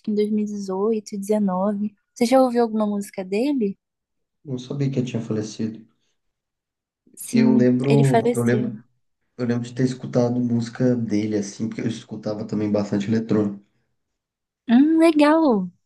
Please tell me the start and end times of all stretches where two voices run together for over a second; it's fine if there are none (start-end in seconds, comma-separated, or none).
7.3-8.7